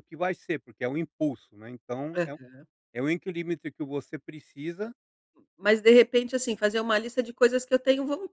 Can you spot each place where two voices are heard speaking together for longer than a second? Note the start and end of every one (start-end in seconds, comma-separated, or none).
none